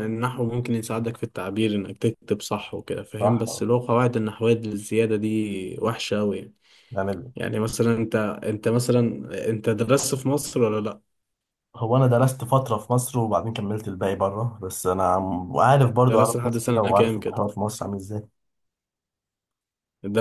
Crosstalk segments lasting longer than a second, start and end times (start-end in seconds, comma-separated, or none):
16.1-17.4